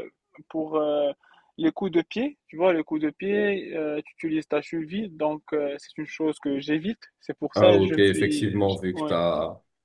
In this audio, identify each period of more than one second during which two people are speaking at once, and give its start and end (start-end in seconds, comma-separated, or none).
7.5-9.1